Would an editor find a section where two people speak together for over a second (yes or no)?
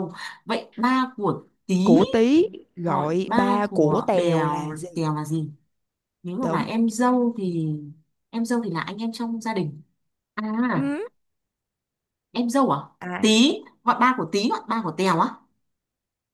yes